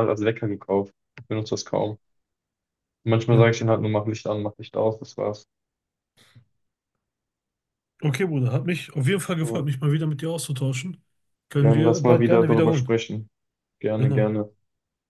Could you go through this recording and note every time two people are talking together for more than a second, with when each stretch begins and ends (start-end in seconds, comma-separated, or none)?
11.6-13.0